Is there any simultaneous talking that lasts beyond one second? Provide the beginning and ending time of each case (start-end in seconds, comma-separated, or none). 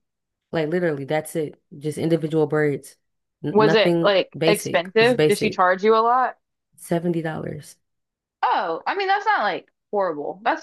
3.5-5.6